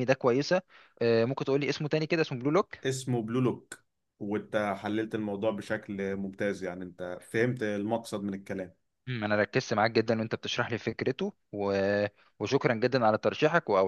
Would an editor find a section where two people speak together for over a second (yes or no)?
no